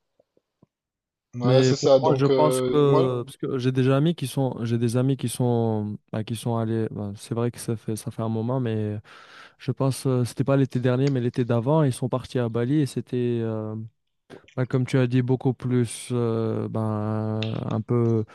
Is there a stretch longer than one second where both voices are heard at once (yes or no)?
yes